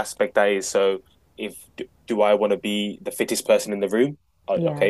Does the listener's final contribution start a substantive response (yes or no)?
no